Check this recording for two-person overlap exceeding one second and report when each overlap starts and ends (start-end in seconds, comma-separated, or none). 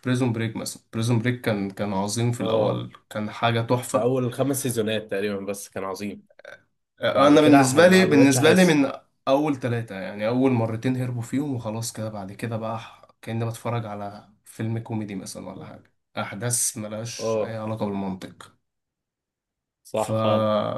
7.1-8.8